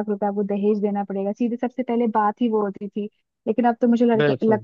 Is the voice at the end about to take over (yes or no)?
no